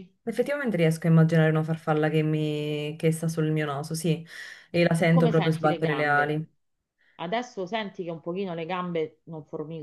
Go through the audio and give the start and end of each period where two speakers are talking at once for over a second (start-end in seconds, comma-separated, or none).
4.7-6.4